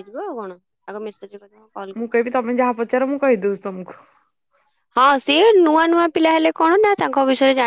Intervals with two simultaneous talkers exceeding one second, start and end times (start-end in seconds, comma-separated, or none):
none